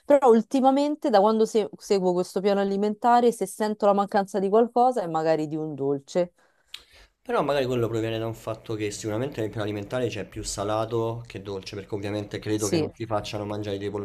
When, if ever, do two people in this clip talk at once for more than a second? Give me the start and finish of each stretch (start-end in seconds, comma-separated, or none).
none